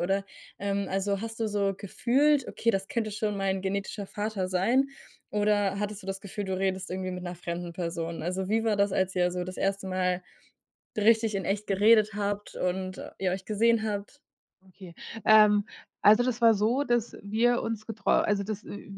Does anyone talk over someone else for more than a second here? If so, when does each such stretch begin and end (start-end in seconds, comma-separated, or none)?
none